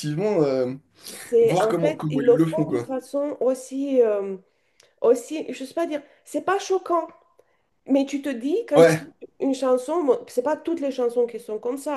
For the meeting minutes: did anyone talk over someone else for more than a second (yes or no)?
yes